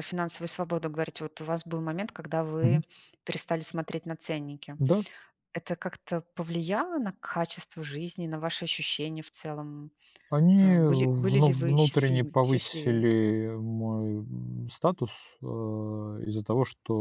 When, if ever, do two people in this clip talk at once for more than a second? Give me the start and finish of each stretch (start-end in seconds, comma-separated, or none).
10.6-13.1